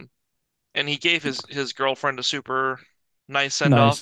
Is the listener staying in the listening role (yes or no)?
no